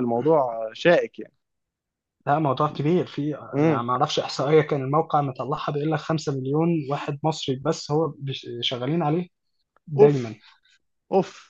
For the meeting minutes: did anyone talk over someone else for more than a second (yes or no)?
no